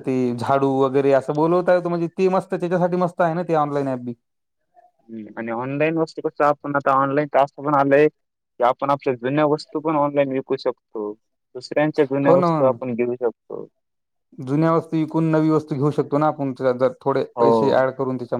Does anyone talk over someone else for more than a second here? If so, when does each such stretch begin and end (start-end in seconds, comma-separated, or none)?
none